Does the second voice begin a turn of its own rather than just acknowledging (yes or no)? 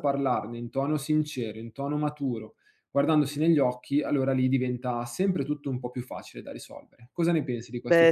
yes